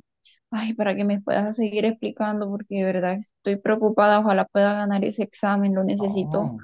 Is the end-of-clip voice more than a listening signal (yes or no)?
yes